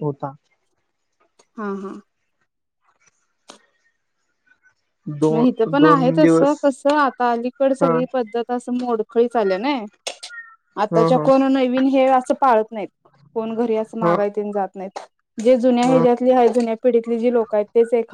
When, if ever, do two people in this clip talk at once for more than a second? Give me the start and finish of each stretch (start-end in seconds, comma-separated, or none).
5.3-6.6